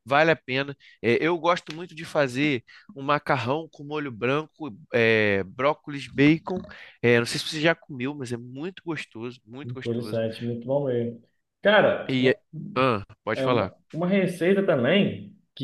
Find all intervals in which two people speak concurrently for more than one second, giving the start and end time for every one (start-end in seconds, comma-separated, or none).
none